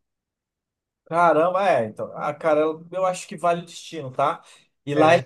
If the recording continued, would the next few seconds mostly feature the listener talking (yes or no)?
no